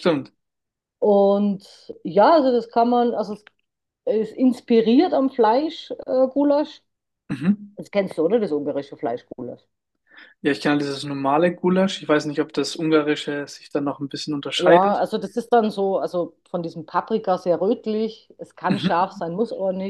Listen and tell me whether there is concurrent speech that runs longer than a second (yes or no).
no